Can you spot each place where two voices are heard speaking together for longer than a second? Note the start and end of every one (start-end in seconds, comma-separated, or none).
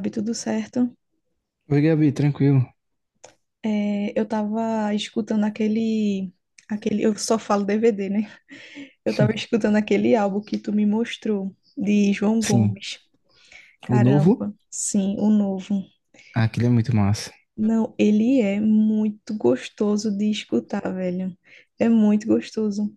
none